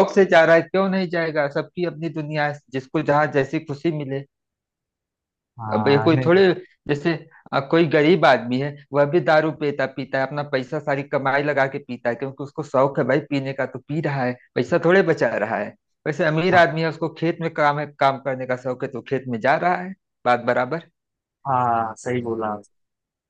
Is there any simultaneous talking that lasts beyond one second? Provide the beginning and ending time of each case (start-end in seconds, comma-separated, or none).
none